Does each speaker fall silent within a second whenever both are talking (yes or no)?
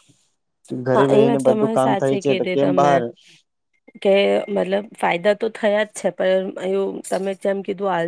no